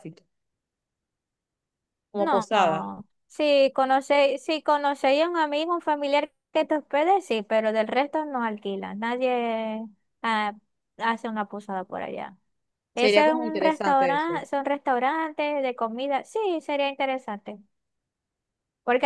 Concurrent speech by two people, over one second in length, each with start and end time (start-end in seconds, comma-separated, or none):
12.9-14.5